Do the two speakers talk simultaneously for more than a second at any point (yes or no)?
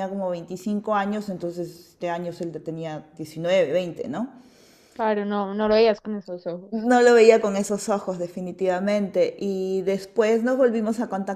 no